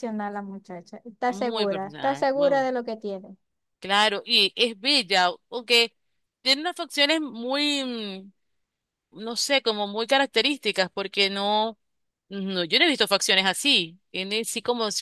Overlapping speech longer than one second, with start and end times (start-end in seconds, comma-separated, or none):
1.3-2.7